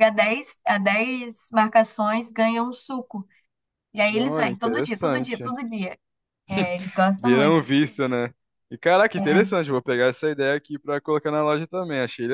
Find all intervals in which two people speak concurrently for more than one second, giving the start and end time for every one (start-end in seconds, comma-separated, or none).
4.2-5.5